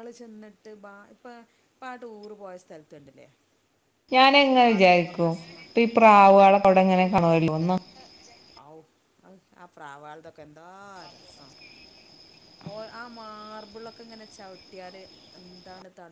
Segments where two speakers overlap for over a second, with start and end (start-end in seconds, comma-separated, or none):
none